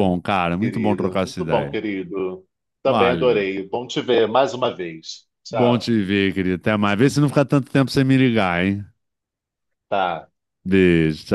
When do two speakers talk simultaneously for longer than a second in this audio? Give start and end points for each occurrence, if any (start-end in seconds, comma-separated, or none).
0.6-1.8